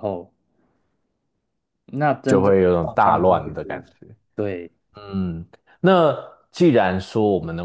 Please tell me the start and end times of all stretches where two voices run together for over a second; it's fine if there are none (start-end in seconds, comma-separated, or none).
2.3-3.8